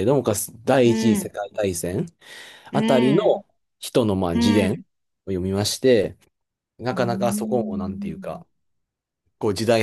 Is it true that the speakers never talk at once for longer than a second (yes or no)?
no